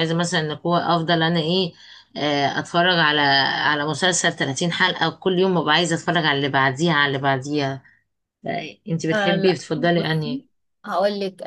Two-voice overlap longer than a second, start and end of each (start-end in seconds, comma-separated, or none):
9.1-10.4